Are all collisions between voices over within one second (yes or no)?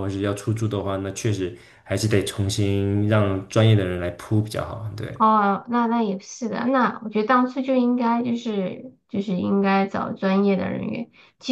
yes